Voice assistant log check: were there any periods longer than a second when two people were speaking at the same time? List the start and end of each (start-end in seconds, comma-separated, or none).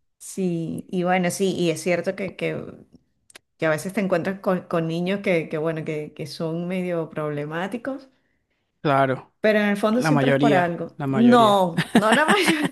9.9-11.6